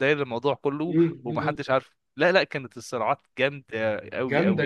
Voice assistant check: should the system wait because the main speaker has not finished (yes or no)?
no